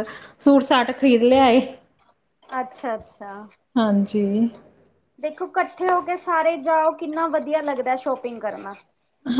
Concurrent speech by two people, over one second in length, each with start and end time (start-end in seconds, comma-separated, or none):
none